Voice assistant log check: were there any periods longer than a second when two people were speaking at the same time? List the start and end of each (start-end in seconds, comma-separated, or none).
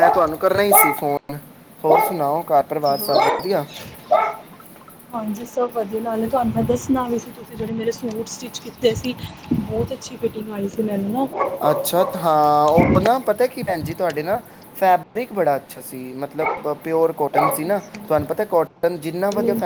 none